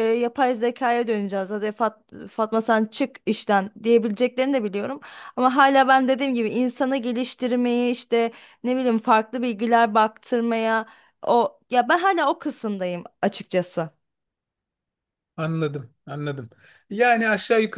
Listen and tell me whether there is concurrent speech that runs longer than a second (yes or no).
no